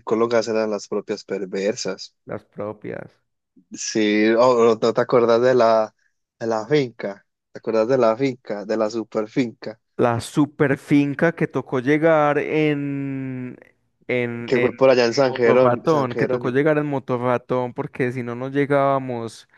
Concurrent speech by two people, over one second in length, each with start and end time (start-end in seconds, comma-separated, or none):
14.5-16.6